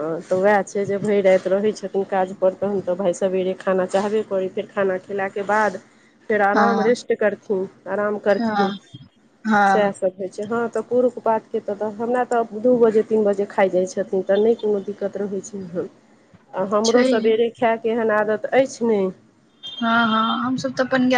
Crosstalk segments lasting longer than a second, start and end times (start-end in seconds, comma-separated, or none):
none